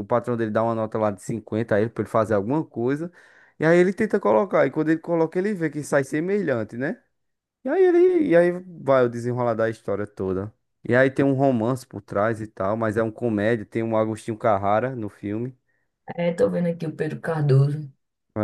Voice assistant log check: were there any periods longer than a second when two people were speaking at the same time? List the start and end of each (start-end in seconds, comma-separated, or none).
none